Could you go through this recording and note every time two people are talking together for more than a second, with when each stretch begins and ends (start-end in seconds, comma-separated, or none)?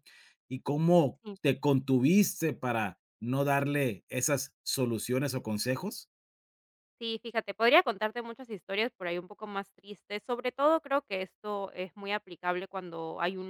none